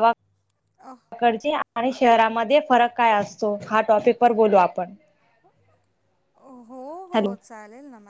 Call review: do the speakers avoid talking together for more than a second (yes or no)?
yes